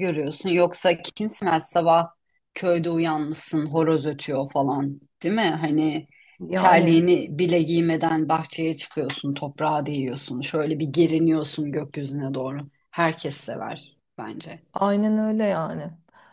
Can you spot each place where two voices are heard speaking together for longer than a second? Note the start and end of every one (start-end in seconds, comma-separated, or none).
none